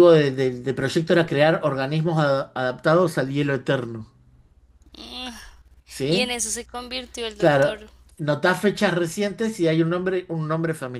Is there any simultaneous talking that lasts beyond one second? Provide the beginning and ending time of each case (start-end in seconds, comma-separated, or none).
none